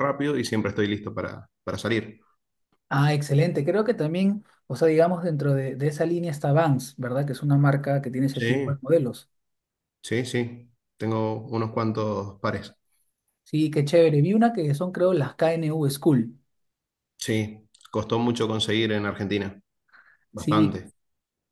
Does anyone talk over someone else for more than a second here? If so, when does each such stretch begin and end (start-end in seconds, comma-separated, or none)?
none